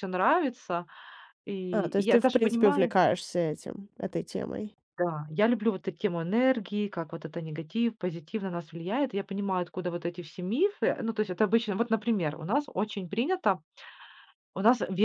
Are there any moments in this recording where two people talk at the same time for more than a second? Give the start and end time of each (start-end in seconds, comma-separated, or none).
1.7-2.9